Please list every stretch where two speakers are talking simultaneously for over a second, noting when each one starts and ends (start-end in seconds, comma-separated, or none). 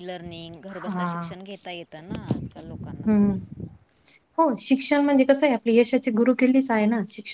none